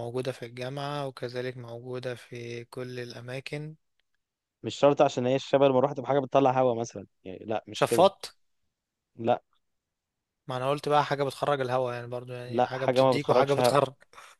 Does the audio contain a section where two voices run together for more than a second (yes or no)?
yes